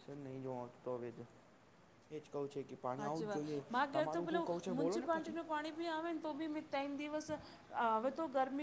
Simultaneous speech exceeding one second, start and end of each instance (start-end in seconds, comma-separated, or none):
3.0-5.3